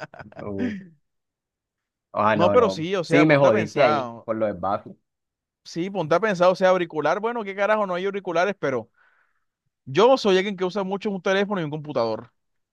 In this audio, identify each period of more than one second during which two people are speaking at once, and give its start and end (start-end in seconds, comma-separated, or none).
2.3-4.2